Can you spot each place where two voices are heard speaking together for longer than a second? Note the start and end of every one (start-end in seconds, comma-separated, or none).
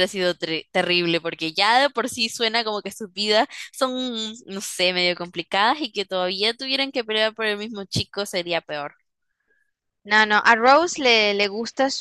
none